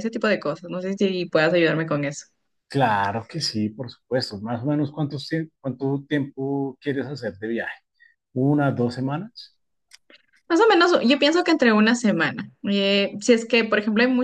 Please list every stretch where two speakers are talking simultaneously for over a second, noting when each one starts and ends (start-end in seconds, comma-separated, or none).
none